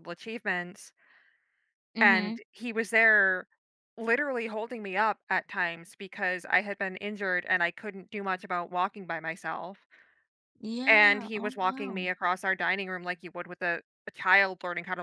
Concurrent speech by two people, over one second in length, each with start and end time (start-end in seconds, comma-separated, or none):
10.9-12.1